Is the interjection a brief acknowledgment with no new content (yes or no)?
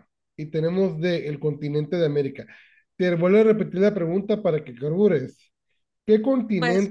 yes